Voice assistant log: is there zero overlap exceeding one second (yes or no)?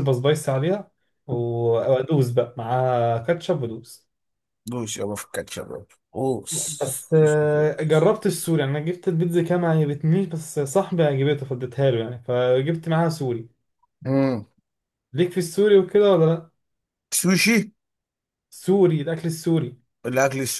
no